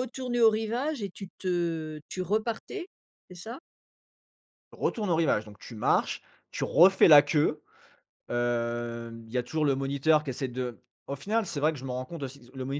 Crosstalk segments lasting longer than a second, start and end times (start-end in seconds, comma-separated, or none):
none